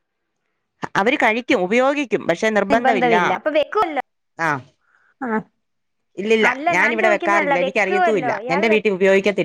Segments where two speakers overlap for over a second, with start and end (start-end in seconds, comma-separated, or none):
6.5-8.9